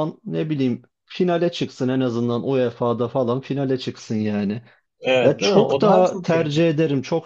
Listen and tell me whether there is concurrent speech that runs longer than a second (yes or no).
yes